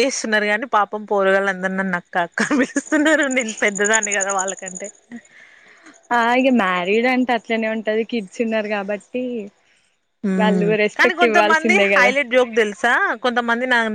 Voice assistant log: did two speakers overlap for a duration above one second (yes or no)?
yes